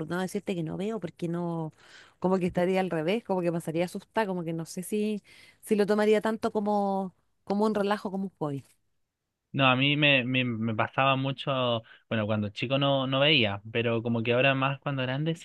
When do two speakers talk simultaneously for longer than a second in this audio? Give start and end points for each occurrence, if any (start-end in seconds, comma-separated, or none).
none